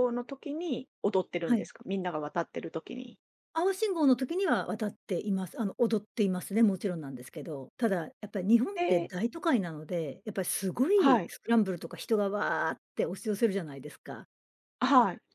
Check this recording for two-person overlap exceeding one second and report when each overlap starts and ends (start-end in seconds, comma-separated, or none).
none